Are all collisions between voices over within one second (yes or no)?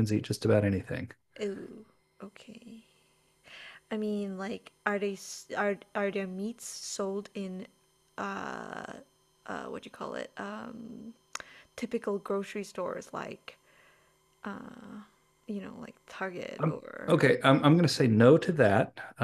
yes